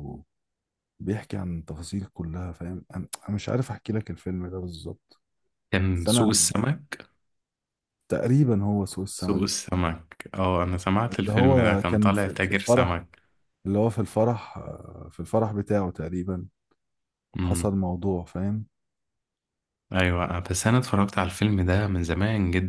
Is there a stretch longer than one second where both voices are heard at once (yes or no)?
yes